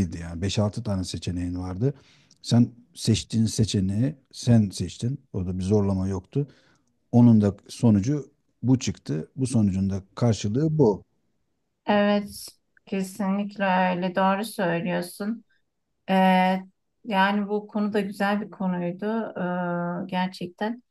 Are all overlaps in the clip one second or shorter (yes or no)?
yes